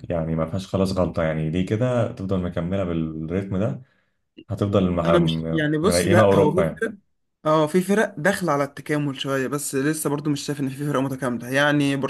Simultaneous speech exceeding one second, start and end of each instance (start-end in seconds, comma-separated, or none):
5.0-6.8